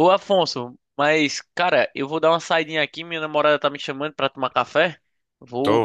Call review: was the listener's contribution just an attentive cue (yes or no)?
no